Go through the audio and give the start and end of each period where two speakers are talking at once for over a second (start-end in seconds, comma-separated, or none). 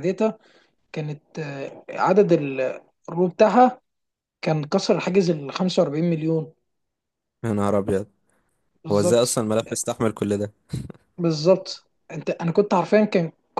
none